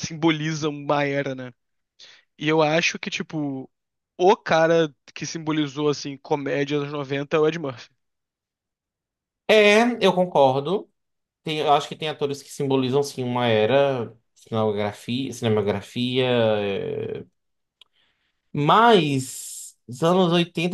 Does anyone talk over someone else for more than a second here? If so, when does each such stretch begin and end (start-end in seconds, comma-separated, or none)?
none